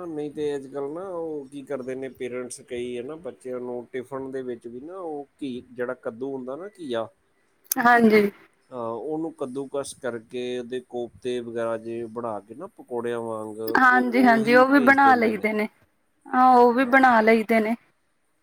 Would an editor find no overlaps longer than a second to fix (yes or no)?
no